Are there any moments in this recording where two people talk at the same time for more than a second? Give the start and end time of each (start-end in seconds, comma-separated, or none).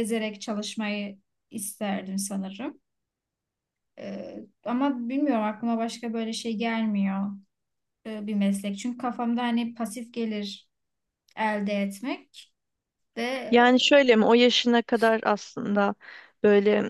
none